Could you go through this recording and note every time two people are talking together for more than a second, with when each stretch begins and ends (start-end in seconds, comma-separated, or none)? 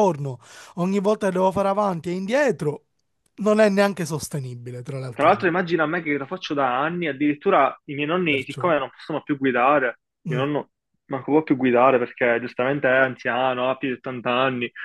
none